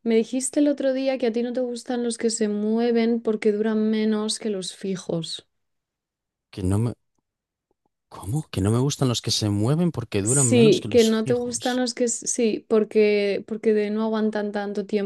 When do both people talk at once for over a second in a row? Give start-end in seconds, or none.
10.2-11.8